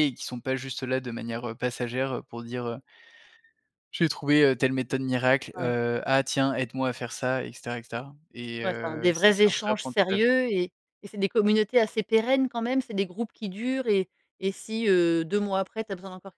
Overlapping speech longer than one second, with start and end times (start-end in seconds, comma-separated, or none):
8.6-10.3